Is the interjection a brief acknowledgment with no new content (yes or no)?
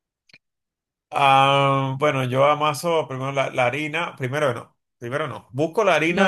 no